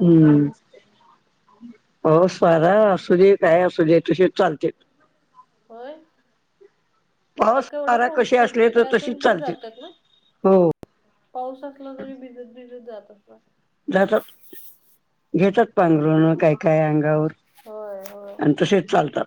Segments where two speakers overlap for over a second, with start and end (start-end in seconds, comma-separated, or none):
7.4-9.5